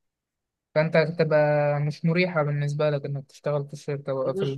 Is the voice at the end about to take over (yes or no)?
yes